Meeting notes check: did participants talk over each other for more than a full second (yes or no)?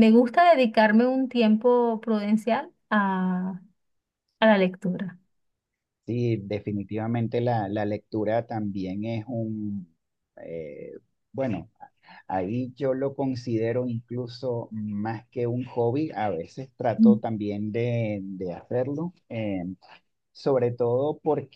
no